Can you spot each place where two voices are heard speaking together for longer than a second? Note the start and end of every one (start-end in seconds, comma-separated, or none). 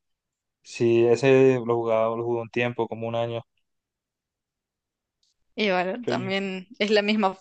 none